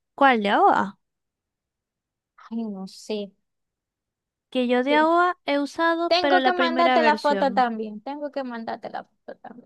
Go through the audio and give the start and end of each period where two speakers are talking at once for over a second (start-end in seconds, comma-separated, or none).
6.1-7.5